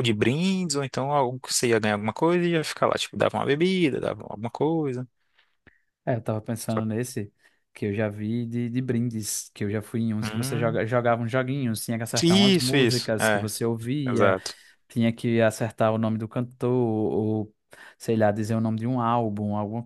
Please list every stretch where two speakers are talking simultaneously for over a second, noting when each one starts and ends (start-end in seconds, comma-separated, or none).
12.2-13.5